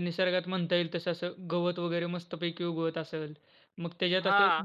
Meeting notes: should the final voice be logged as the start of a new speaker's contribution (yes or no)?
no